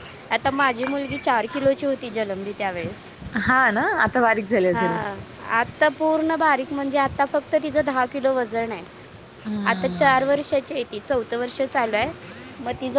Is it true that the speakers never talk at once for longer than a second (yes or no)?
yes